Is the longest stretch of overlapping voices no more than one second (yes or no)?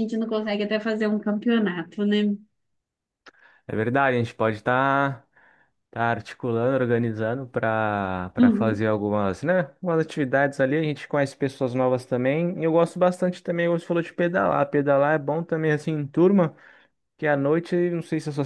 yes